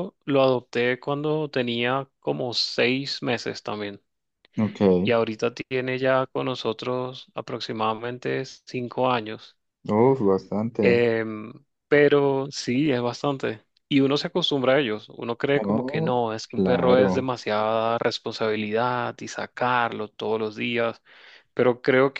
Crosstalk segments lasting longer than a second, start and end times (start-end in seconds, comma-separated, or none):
15.7-17.3